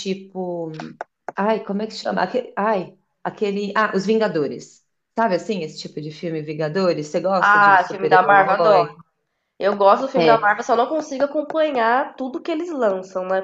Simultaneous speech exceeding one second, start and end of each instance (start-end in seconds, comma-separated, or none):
7.4-8.9